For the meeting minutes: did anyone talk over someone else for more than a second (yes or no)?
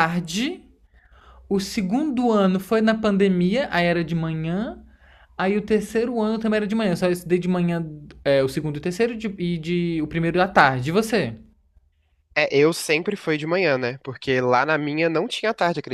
no